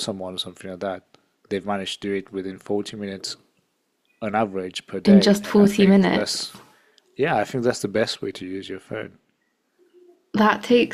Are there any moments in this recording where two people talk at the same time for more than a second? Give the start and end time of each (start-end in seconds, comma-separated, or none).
5.0-6.5